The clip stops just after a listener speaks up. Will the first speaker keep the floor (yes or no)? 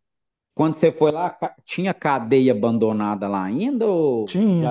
no